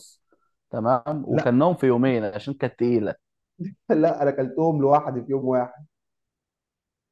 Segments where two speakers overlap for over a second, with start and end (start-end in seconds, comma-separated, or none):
none